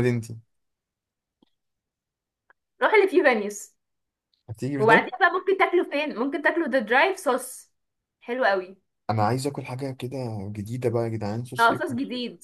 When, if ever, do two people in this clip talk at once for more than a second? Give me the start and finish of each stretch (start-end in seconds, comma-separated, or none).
none